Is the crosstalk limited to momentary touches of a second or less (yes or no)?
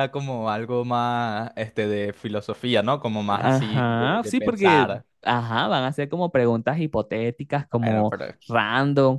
no